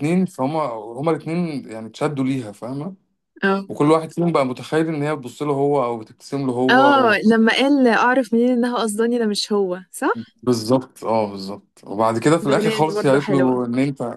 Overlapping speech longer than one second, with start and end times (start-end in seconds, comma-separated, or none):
12.4-13.6